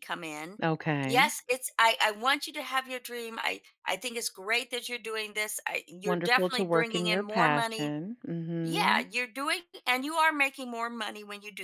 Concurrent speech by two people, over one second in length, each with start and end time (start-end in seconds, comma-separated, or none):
6.0-7.9